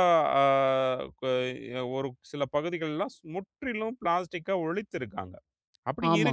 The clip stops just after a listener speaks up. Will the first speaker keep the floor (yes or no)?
yes